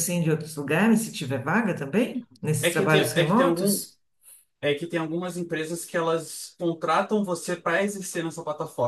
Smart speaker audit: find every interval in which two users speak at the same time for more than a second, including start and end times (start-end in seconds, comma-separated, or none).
2.6-3.9